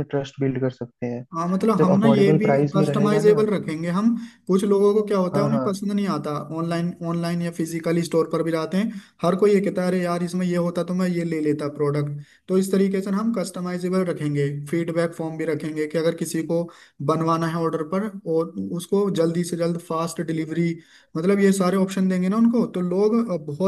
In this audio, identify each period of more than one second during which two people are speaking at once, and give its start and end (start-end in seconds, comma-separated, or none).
1.8-3.5